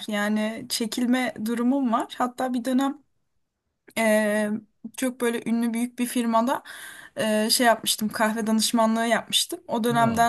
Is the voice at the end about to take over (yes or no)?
no